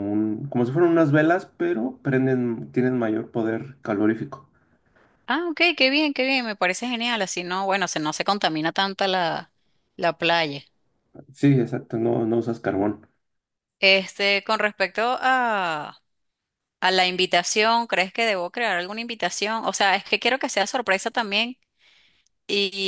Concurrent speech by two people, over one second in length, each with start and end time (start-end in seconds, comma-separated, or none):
none